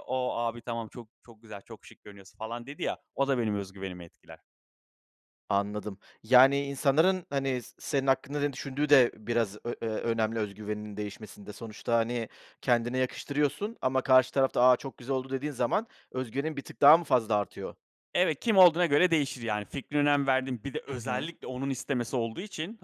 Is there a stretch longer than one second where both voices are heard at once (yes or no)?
no